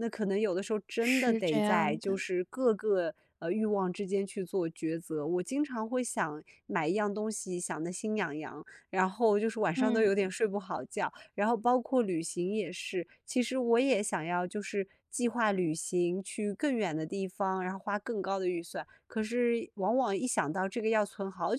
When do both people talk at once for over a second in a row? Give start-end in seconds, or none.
1.0-2.2